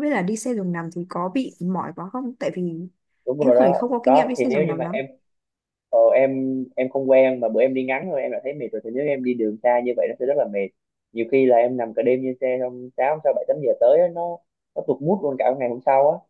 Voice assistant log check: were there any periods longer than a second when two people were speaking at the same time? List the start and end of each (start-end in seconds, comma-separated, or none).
3.4-5.0